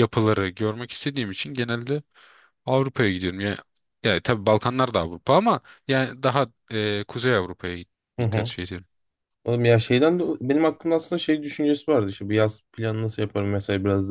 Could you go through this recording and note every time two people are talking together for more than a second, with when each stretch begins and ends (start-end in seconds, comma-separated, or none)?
none